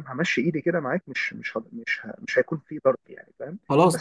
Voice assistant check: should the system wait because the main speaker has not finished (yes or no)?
yes